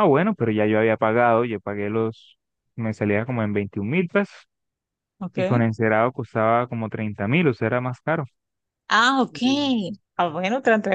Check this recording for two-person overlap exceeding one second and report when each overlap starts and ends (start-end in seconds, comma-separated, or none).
none